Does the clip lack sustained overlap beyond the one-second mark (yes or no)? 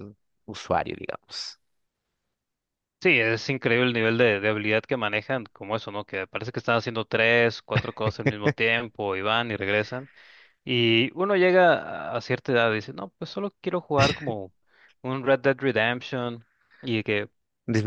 yes